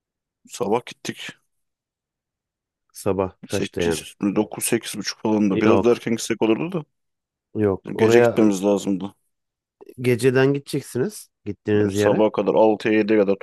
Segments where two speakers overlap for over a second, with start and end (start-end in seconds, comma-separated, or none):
none